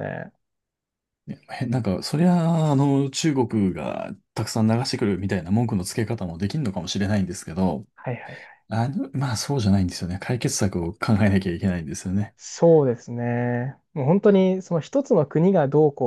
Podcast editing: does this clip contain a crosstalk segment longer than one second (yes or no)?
no